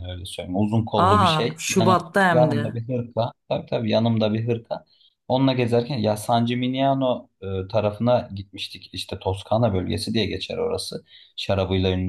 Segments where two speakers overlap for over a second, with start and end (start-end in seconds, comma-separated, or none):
1.0-2.8